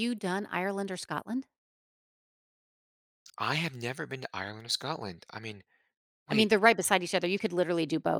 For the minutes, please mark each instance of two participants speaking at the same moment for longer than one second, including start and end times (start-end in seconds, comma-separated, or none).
none